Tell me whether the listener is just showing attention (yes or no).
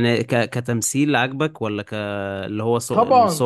no